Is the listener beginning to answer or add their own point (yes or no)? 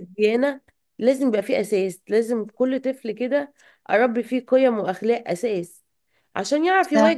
no